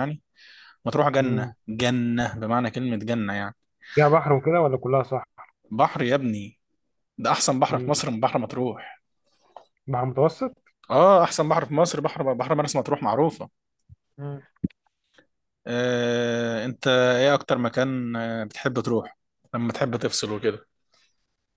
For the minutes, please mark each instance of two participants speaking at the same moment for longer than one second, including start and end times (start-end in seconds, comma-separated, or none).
none